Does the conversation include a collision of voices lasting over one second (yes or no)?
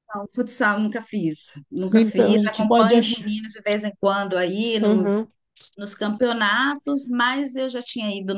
yes